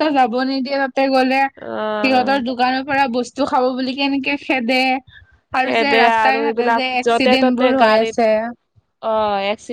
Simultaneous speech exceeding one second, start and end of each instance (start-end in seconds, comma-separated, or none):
5.6-8.1